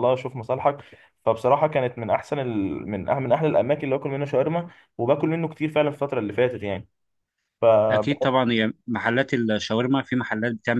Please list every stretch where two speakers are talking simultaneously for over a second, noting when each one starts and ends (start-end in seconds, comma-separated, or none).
none